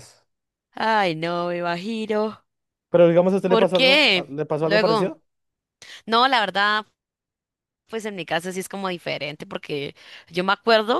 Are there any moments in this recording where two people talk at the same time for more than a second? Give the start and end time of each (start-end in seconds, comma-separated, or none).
3.5-5.2